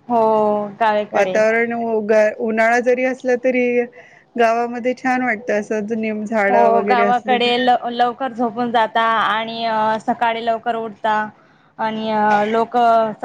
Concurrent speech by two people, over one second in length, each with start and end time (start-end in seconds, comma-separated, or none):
none